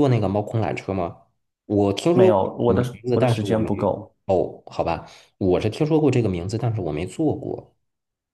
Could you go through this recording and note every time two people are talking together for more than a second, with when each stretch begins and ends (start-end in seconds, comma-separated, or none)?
2.1-3.7